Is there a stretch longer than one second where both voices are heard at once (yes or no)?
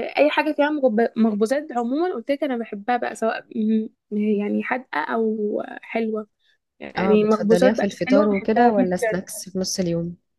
yes